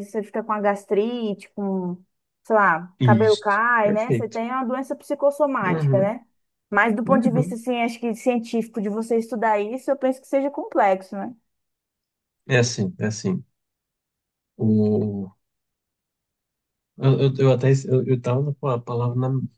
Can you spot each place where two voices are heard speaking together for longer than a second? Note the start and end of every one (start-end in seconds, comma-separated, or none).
3.0-4.4